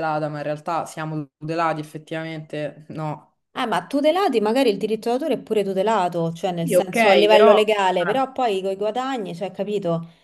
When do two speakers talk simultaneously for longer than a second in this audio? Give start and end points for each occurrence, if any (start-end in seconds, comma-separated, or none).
6.6-8.3